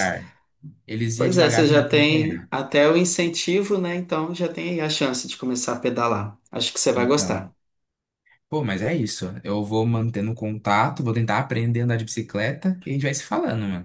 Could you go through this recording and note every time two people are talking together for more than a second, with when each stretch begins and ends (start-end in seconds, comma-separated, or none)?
1.2-2.5